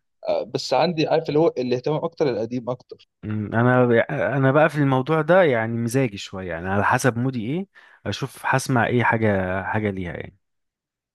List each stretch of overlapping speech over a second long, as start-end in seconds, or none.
none